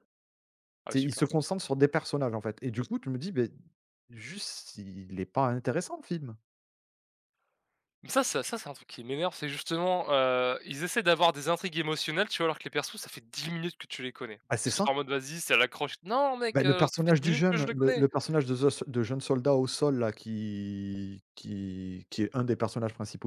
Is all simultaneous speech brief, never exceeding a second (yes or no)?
no